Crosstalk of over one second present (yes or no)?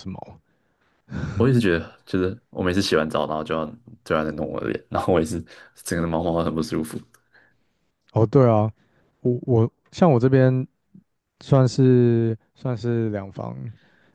no